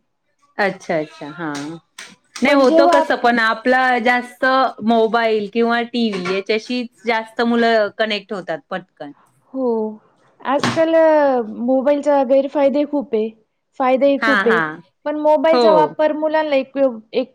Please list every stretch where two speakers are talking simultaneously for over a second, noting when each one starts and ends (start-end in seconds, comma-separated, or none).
none